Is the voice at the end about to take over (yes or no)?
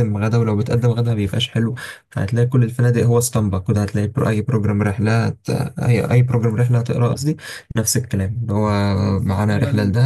yes